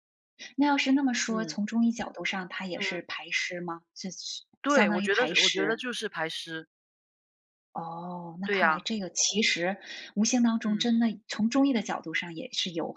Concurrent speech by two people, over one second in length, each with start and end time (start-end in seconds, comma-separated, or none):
4.6-5.8